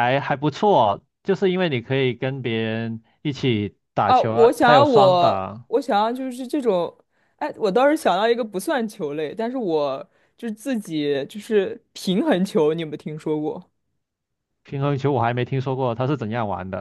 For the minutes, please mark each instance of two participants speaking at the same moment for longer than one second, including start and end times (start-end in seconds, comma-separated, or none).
4.0-5.7